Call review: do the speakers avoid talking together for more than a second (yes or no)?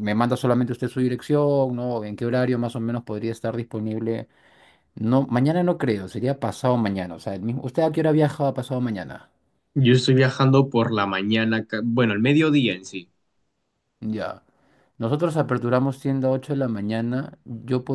yes